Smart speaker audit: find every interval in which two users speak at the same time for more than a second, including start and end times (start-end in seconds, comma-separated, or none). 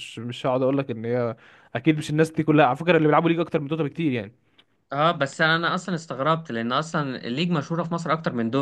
none